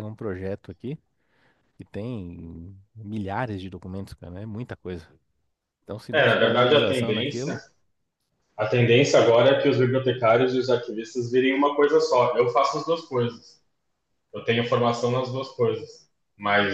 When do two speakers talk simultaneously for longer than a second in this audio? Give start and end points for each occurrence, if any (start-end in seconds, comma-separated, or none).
6.1-7.6